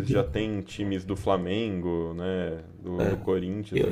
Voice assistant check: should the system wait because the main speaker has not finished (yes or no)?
no